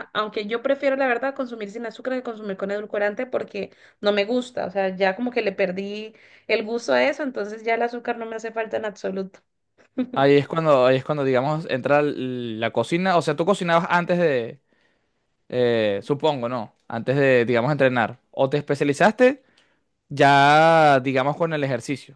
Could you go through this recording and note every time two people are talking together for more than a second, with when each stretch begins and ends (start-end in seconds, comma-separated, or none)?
none